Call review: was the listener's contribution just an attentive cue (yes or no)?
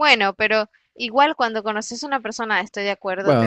no